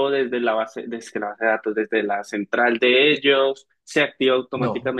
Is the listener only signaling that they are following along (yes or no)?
yes